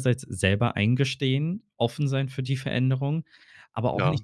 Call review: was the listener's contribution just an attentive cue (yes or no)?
yes